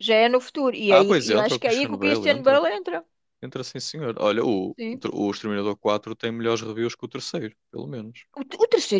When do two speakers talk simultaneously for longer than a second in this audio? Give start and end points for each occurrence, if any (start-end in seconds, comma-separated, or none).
0.9-2.6